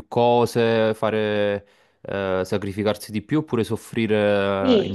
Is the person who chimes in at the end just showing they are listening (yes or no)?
no